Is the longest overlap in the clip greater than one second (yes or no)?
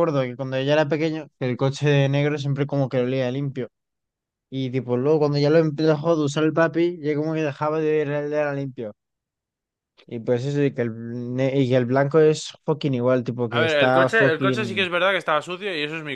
yes